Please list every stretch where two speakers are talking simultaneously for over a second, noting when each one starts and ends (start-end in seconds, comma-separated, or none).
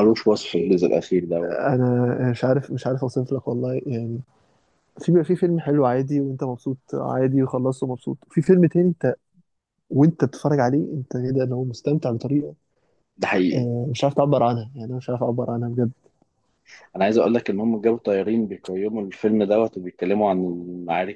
none